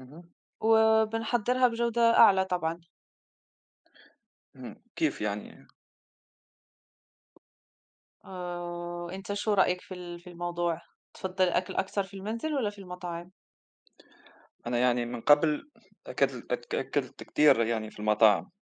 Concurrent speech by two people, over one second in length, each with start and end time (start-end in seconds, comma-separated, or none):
none